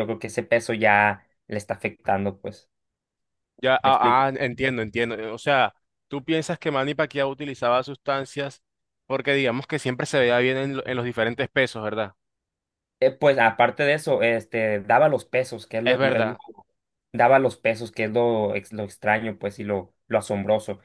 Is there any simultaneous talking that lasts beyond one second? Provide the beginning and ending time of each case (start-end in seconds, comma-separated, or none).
none